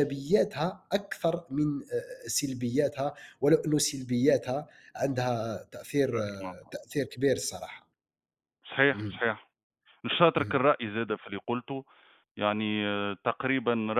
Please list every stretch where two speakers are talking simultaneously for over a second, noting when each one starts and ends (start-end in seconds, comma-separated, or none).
none